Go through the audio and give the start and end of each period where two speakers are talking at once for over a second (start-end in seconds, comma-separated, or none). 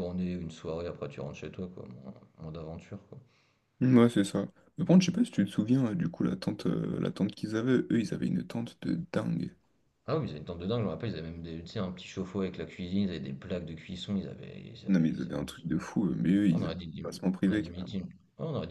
16.5-18.0